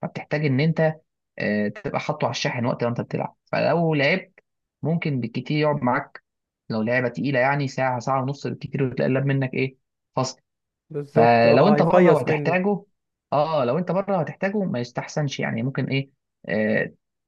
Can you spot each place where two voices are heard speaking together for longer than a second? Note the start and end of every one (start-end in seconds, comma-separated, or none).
11.1-12.6